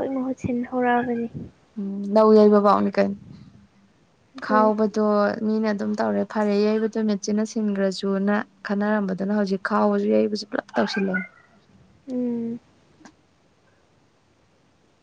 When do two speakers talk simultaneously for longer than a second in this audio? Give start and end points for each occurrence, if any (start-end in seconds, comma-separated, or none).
none